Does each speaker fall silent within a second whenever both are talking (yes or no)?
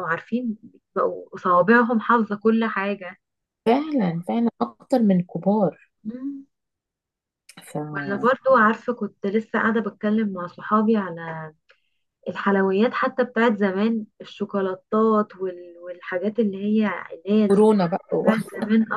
yes